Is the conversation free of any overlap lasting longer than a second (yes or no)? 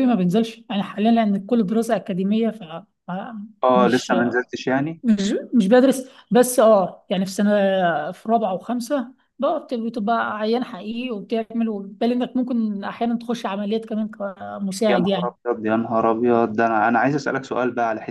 yes